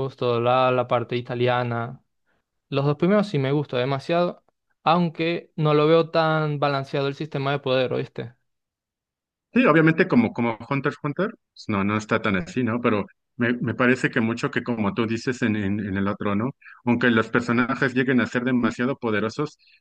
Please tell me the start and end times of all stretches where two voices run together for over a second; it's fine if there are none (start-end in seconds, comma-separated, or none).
none